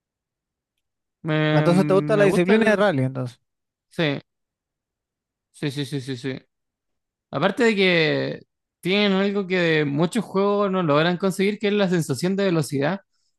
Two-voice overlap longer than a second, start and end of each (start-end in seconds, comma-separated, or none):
1.5-2.9